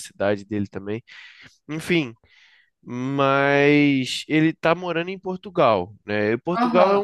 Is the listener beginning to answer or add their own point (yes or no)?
no